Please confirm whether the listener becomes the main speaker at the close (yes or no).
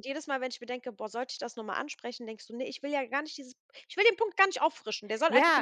yes